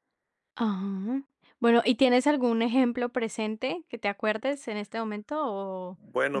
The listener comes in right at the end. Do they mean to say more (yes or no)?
yes